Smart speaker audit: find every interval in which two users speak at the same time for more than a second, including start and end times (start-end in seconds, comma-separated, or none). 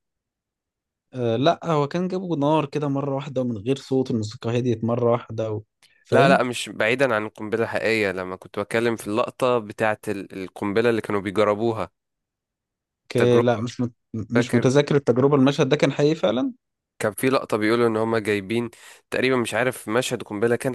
none